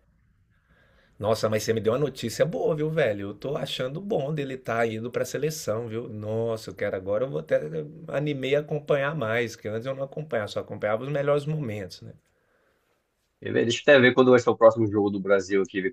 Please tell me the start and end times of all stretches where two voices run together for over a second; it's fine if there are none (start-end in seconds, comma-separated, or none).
none